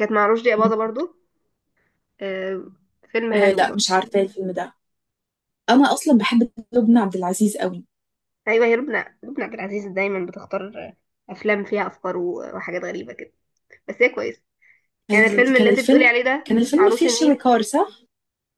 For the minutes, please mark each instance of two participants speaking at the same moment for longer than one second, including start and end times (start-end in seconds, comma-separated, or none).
15.1-17.4